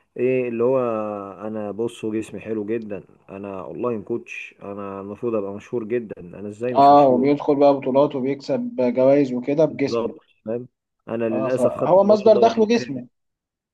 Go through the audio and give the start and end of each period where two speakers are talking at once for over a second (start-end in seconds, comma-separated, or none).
11.3-13.0